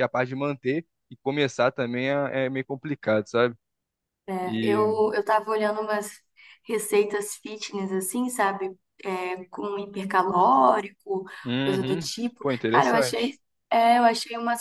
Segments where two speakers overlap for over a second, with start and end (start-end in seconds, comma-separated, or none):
11.6-13.4